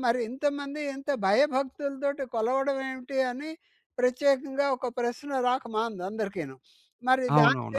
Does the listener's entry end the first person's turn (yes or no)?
yes